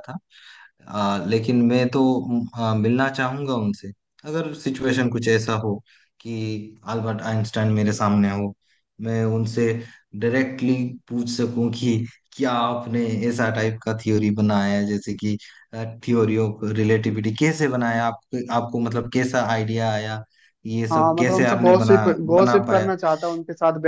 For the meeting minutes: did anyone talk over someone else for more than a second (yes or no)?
yes